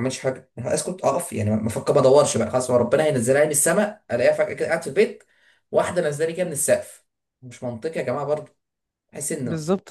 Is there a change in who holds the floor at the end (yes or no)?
yes